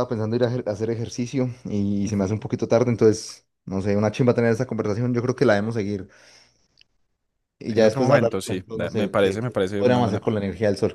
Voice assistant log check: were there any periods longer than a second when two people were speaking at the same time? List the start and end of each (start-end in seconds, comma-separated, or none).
7.7-10.3